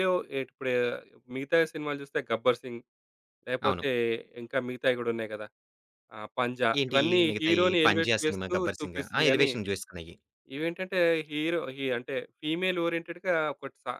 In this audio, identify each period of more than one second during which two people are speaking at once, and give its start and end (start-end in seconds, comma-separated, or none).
6.8-9.5